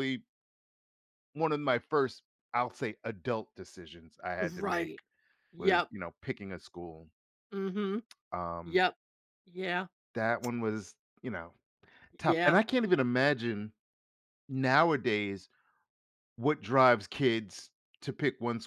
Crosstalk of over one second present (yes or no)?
no